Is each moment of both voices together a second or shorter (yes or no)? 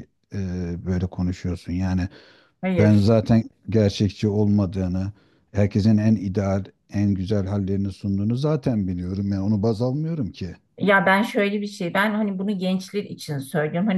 yes